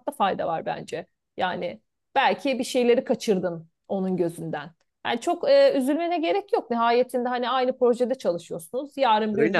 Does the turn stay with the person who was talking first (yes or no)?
yes